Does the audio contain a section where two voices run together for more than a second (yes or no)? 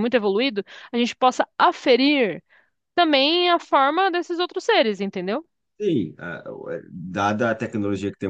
no